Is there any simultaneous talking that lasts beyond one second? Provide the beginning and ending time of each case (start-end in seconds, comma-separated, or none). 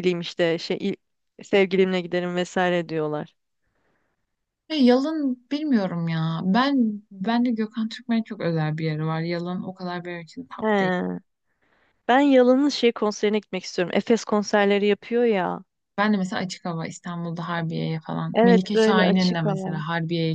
18.3-19.8